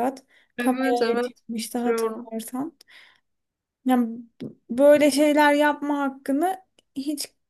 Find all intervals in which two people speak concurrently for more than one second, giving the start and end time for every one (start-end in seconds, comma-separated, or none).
0.6-2.3